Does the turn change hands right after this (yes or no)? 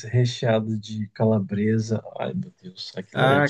yes